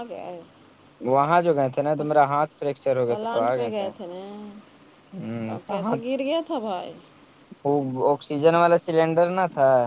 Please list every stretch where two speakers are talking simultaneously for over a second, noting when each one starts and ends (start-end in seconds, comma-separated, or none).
none